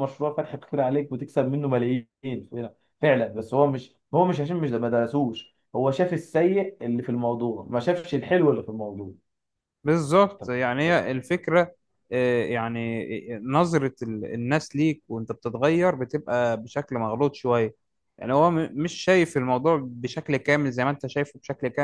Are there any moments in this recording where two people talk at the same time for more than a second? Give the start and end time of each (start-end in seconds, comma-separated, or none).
none